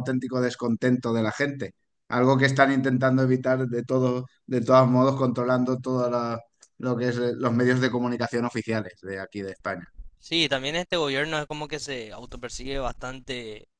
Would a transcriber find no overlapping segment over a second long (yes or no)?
yes